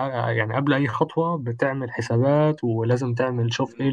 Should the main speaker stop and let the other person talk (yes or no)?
no